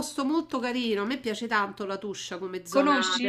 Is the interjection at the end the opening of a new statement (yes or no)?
no